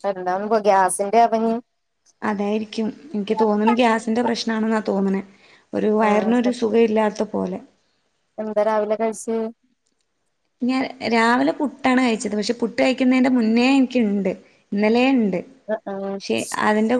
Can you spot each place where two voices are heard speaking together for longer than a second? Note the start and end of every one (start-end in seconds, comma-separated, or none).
none